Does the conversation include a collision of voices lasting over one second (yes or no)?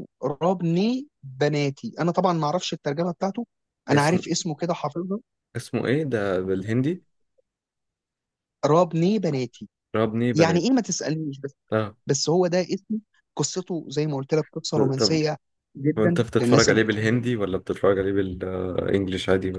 yes